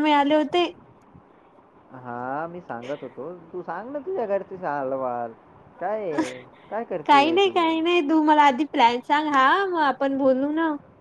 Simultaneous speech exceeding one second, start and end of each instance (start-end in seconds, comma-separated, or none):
none